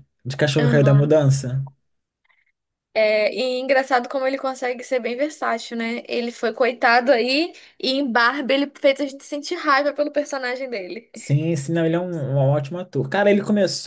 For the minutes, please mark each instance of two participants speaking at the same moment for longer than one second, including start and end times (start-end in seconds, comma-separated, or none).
none